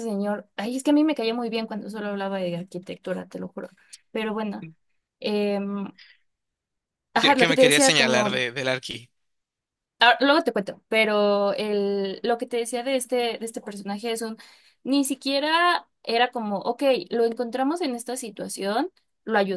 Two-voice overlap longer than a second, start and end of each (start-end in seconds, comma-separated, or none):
7.2-8.4